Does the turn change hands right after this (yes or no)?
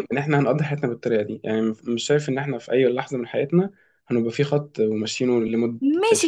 yes